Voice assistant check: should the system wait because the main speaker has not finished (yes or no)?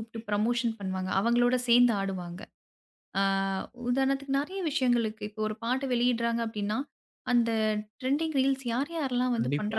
yes